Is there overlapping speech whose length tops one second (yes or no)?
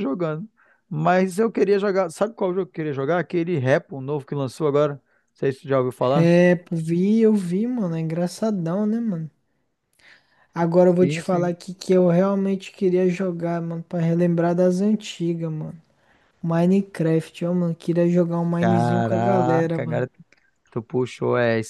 yes